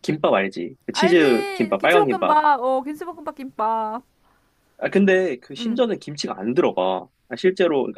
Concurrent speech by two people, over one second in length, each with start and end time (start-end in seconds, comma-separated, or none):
0.9-2.4